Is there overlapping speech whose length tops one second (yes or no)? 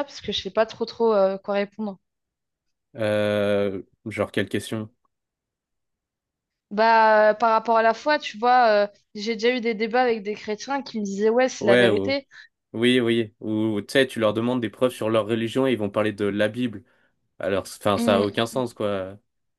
no